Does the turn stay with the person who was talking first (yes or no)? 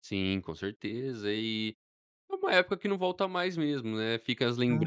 yes